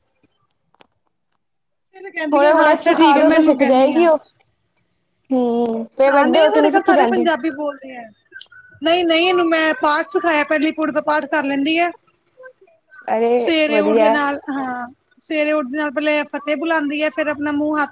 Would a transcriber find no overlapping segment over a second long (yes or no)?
no